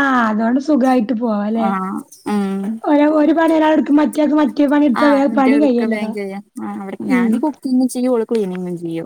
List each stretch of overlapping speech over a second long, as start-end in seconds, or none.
none